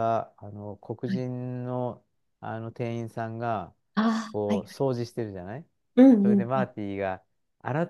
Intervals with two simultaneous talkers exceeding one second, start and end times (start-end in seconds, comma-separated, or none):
none